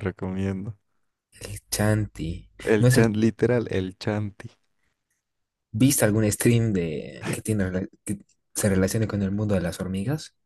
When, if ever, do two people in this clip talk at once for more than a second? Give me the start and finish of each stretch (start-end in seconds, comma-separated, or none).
none